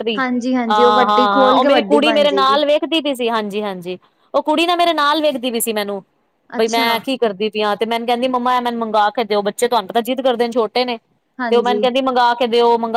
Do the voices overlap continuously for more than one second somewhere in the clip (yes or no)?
yes